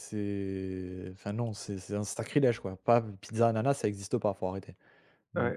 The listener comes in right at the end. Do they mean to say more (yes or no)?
yes